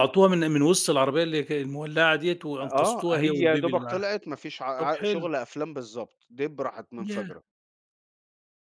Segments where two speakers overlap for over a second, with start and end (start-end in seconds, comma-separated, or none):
2.6-4.0